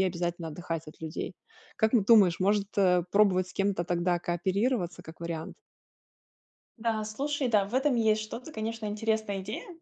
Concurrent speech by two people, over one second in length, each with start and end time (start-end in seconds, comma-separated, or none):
none